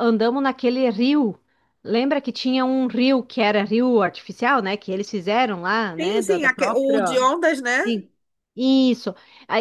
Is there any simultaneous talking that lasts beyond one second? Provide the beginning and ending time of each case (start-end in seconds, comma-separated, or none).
6.0-7.2